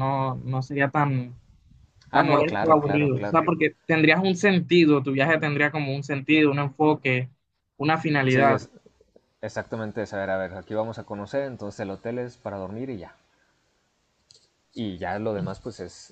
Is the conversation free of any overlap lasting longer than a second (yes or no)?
no